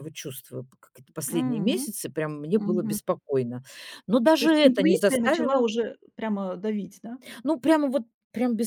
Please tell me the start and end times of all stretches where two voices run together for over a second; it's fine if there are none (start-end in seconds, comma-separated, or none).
4.4-5.6